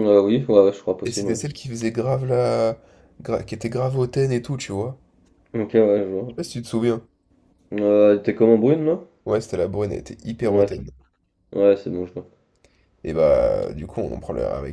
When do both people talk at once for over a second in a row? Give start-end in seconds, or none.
none